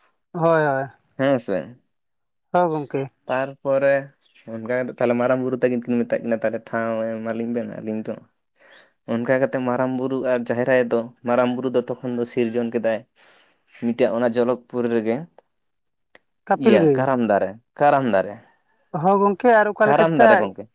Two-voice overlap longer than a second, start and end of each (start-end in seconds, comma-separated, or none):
none